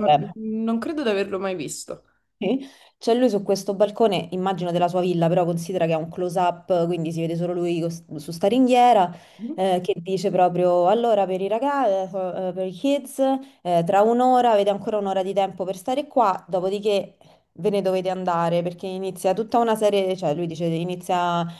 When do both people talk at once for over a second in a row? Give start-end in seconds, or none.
none